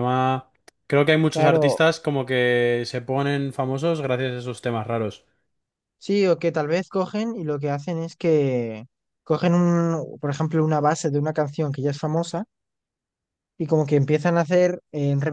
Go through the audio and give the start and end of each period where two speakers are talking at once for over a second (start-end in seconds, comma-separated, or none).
none